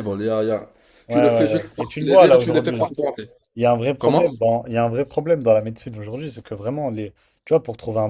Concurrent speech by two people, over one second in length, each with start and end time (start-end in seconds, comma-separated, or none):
1.1-2.9